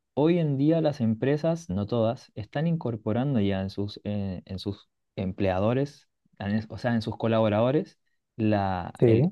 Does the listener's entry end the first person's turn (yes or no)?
no